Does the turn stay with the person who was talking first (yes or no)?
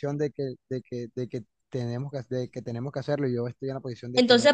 no